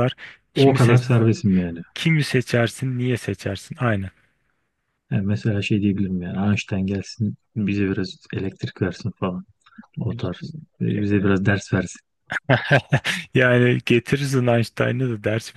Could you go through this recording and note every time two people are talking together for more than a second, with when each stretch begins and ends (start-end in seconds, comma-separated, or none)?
none